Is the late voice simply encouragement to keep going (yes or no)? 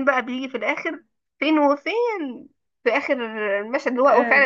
yes